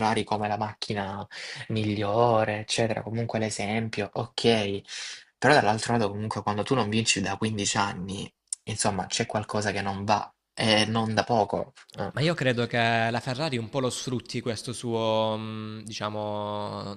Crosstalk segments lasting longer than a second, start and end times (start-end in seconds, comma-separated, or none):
none